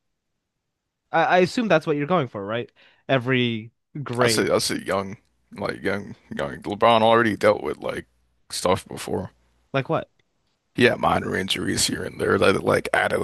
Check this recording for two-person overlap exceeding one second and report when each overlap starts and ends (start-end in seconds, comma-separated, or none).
none